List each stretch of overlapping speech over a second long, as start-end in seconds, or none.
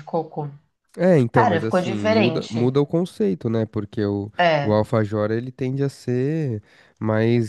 1.3-2.7